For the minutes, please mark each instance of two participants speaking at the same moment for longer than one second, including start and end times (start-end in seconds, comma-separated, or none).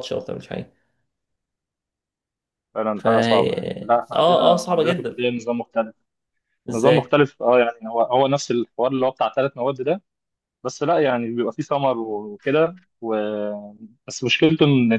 2.9-5.2